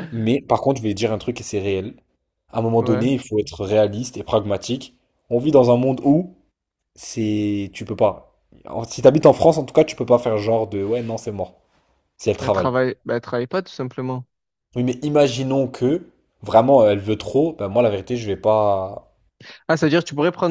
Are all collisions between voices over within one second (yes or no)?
yes